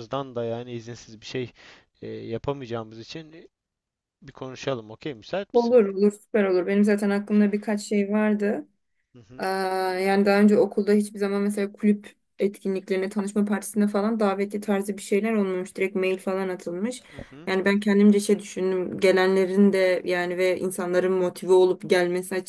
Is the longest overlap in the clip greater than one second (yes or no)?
no